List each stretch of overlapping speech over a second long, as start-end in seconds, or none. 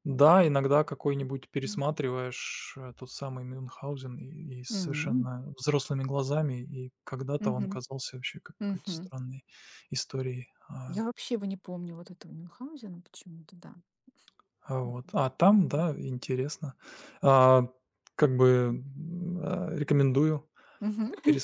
none